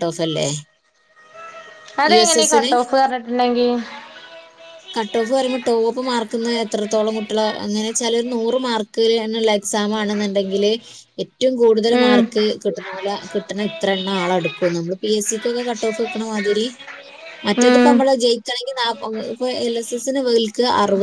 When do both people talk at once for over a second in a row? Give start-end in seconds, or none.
none